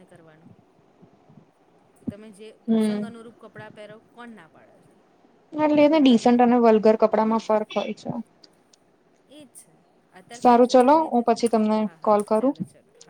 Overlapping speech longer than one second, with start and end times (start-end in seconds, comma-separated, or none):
10.4-12.6